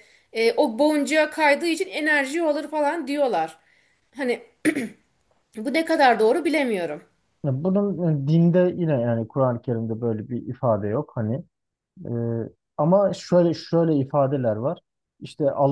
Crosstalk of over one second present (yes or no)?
no